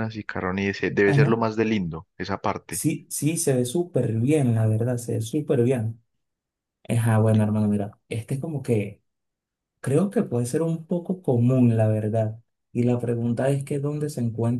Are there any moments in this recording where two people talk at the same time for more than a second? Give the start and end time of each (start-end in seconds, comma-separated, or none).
none